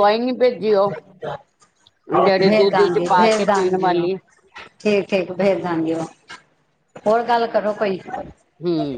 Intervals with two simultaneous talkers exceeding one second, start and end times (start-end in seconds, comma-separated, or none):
2.5-4.1